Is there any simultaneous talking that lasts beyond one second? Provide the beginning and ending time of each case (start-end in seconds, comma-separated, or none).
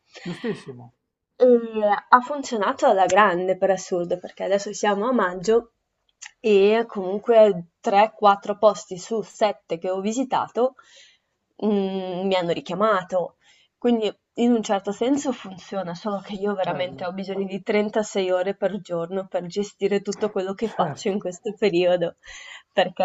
none